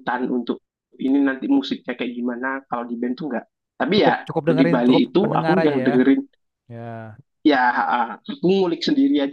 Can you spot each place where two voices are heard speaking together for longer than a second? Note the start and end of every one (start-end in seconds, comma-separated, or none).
3.9-5.9